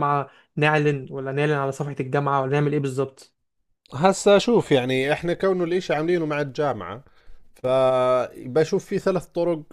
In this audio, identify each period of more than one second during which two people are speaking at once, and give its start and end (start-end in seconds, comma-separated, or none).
none